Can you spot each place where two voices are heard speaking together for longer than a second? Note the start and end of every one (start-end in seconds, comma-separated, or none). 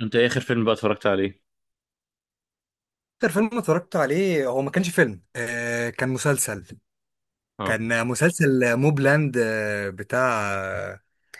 none